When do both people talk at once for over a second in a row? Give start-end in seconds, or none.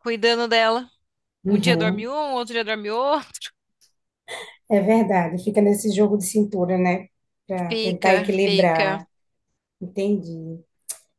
7.7-9.0